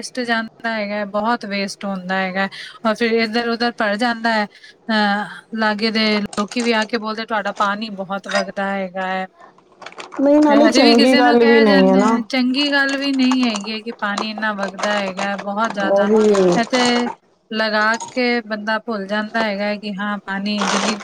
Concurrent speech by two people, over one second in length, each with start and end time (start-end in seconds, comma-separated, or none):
10.7-12.2